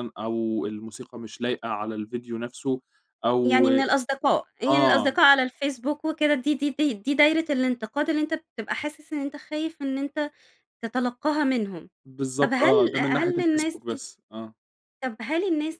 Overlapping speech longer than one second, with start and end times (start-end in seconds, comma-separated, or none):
12.4-14.0